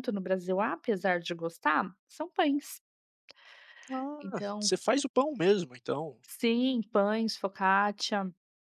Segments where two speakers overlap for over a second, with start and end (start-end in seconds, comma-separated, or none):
none